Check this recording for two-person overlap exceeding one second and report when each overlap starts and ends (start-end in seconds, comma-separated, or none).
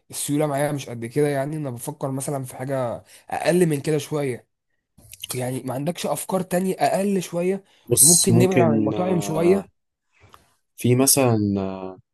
8.0-9.6